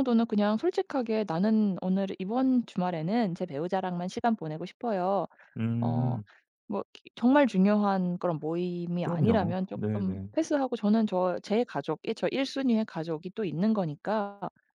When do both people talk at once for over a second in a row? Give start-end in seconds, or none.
9.0-10.3